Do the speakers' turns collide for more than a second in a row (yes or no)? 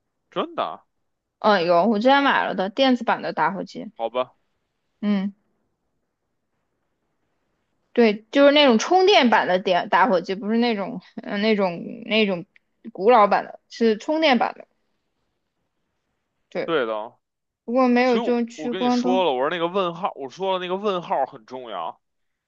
yes